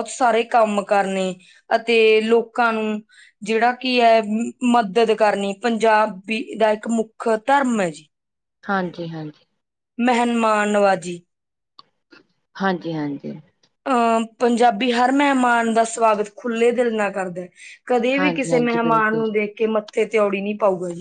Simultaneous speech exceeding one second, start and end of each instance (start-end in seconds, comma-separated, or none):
18.1-19.4